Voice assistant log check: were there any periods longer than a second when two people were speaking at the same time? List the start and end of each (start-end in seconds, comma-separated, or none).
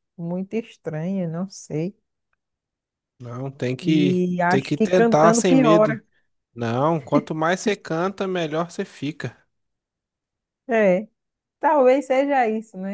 3.8-6.0